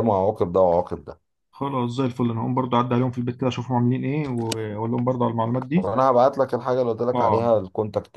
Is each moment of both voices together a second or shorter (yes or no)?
yes